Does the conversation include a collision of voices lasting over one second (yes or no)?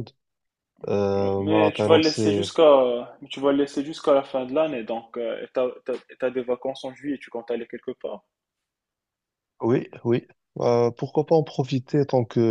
yes